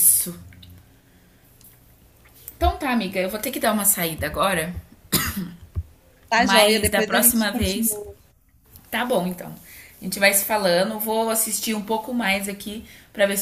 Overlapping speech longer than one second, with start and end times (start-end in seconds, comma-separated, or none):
6.3-8.0